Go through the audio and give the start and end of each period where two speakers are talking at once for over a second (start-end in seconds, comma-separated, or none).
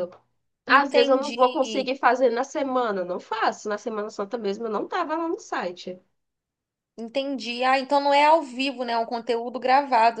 0.7-2.0